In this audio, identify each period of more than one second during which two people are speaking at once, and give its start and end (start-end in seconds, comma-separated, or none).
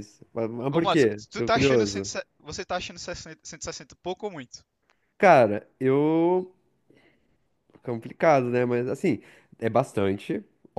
0.7-2.1